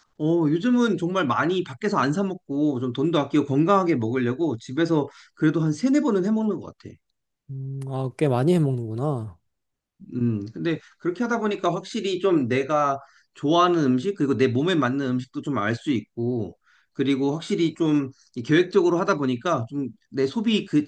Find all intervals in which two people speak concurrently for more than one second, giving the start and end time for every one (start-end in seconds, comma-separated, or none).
none